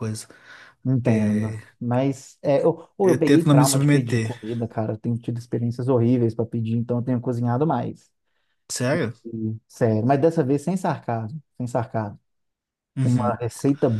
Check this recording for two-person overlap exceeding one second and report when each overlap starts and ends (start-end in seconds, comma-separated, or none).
3.0-4.3